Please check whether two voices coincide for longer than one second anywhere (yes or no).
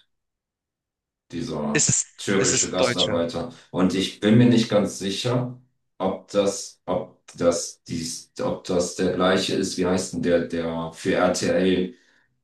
yes